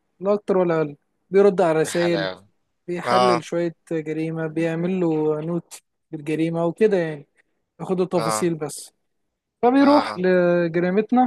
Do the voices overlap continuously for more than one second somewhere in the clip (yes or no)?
no